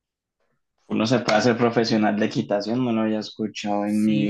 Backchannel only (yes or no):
no